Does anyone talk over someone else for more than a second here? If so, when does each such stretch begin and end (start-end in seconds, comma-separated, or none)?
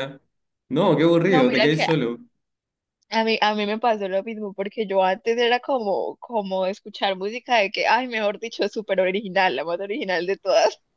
none